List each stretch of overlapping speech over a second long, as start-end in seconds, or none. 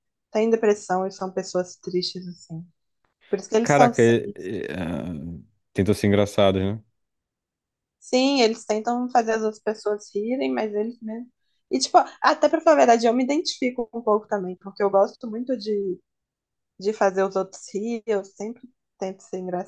none